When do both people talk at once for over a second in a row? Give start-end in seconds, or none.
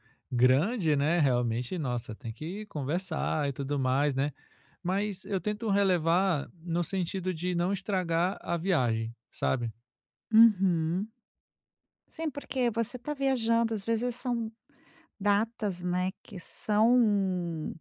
none